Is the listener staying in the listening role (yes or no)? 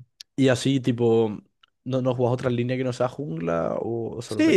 no